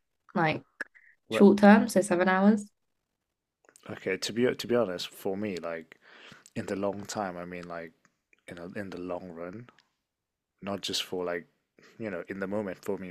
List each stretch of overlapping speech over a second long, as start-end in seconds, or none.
none